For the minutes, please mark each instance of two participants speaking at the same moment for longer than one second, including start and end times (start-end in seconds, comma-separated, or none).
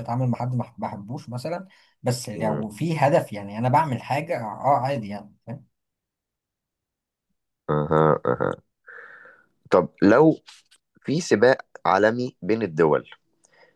none